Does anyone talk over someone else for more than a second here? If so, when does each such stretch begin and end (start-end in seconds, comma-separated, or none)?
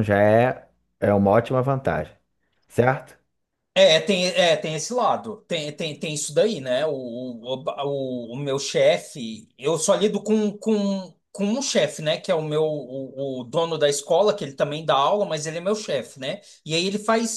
none